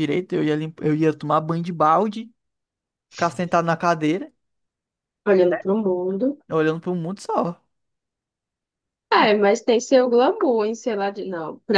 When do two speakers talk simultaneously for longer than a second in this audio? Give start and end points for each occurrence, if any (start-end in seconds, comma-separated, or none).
none